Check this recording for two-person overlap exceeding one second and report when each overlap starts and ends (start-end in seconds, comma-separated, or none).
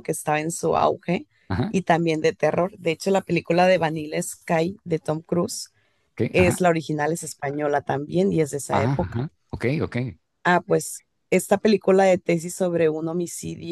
none